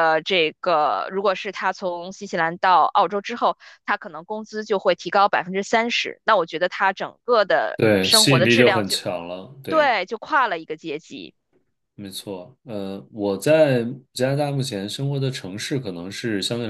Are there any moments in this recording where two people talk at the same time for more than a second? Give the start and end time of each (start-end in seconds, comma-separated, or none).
7.8-9.0